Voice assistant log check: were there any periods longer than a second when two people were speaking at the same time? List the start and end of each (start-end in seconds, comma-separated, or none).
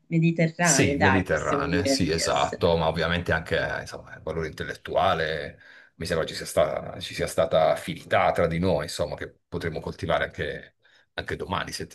0.6-2.8